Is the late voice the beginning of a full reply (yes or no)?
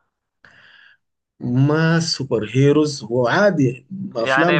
yes